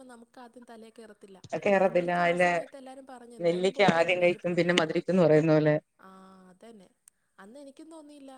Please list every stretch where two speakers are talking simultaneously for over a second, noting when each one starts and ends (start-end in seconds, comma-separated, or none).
3.5-5.2